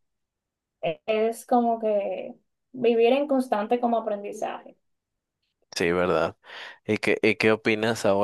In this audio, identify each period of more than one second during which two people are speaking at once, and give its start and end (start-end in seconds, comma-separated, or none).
none